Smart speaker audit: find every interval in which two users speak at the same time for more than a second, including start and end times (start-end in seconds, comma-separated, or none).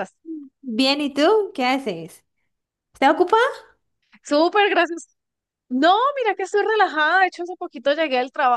none